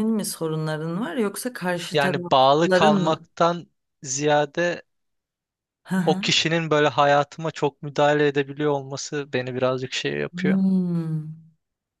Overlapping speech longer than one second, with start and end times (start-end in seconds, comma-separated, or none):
1.9-3.3